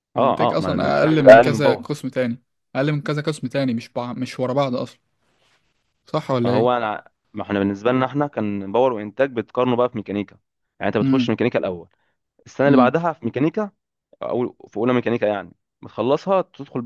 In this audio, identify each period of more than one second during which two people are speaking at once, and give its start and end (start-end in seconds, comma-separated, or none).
0.5-1.9